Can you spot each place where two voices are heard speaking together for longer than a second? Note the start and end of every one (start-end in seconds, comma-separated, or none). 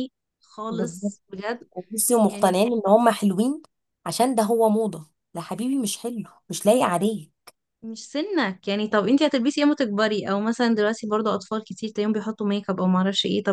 none